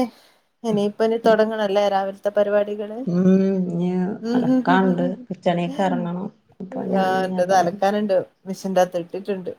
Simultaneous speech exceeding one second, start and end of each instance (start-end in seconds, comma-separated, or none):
none